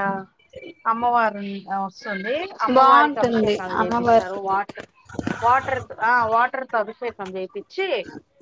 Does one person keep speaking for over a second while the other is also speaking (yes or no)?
yes